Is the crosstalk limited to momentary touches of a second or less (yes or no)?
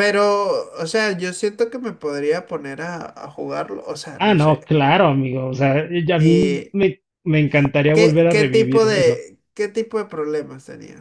no